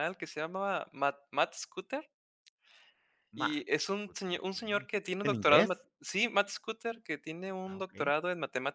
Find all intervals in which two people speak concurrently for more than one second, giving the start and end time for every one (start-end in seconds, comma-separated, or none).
3.4-5.7